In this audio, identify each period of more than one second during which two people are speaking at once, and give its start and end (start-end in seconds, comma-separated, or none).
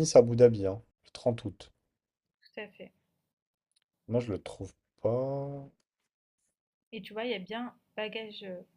none